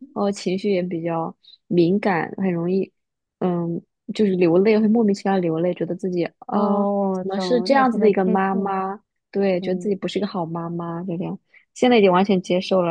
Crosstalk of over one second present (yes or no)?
yes